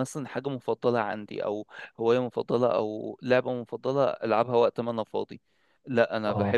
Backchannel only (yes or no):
yes